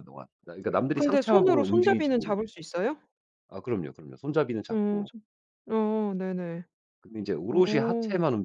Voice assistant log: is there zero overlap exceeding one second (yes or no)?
no